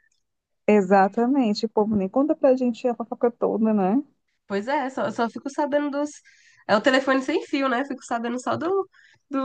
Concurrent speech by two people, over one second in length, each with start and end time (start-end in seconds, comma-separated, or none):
none